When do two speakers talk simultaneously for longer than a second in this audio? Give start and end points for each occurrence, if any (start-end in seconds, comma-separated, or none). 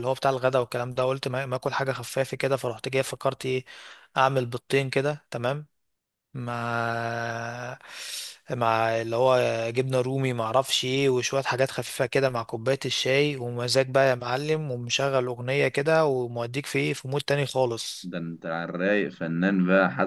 none